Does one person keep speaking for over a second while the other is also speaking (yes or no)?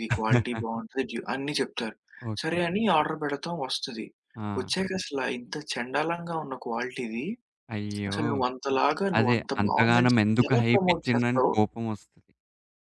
yes